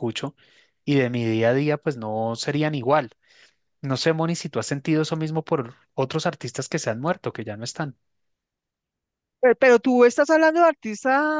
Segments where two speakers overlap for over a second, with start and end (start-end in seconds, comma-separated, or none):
none